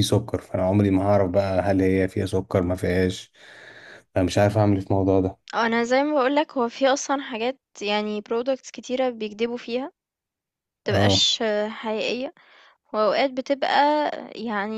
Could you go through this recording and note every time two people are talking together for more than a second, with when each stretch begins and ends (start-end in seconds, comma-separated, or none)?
none